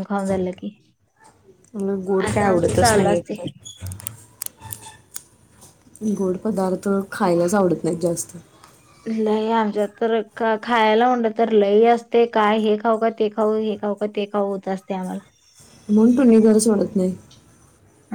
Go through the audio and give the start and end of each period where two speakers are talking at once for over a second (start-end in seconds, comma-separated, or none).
2.3-3.5